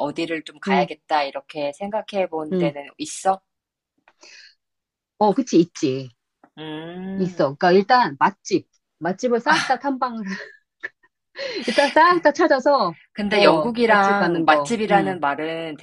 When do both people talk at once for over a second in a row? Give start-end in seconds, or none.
13.1-15.2